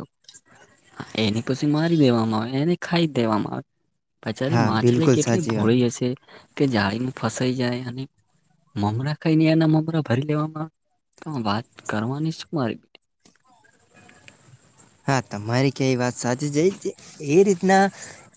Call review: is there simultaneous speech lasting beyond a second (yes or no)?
yes